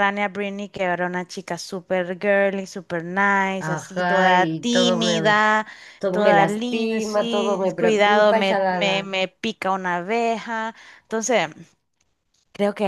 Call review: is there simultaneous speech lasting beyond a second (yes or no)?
yes